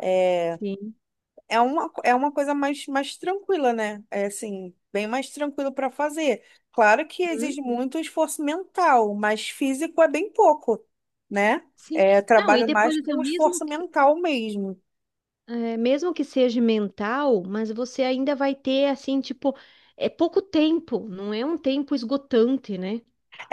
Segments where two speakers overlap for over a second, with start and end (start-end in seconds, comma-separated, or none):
11.8-13.9